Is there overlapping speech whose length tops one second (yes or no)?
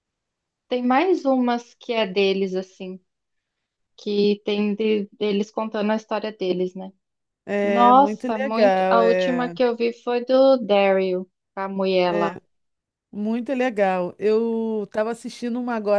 yes